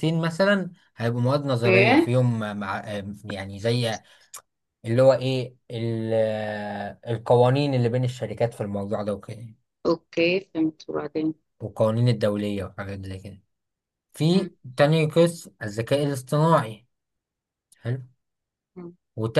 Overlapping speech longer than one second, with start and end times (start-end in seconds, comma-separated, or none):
none